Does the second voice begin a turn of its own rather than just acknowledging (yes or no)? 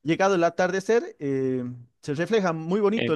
yes